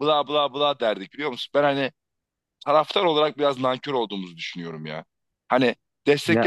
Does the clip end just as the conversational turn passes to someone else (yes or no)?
no